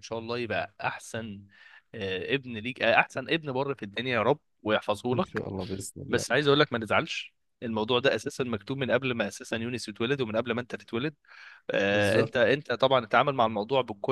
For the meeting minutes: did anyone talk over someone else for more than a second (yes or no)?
no